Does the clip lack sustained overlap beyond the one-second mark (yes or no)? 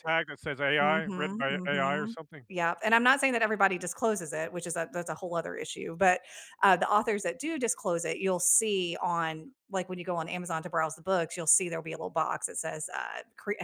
no